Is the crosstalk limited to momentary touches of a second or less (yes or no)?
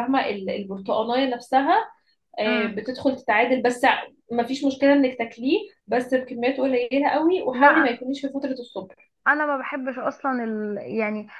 yes